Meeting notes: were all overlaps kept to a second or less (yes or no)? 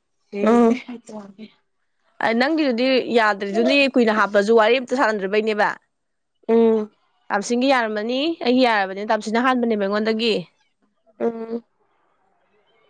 yes